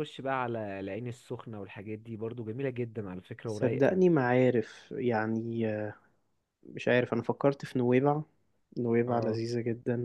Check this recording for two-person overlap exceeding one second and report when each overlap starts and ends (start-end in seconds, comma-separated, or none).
none